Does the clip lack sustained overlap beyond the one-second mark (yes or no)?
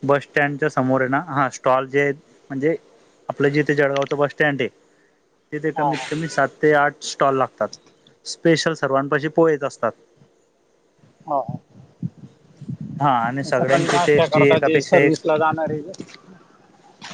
no